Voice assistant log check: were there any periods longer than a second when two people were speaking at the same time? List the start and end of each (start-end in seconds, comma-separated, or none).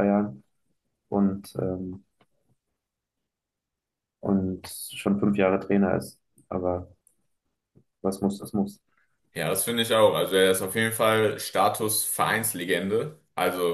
none